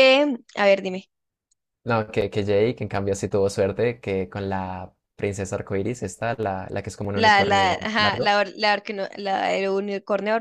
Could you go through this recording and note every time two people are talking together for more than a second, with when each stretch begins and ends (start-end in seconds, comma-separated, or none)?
7.1-8.3